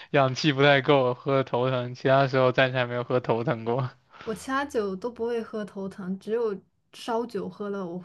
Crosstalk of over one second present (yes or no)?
no